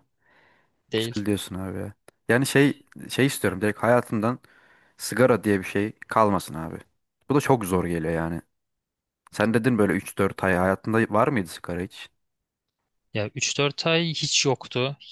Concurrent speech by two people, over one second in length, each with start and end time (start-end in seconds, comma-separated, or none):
none